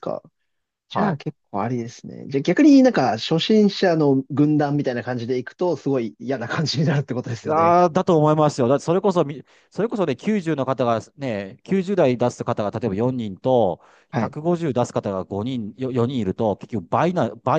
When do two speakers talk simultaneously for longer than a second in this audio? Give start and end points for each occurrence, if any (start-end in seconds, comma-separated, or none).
none